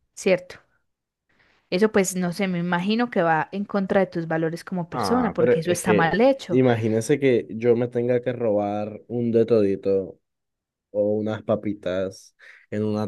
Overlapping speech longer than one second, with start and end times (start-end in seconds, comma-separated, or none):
4.9-6.6